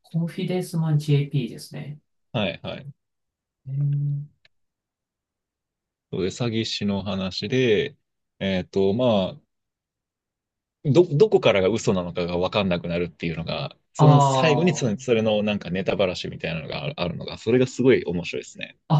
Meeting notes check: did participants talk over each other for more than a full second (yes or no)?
yes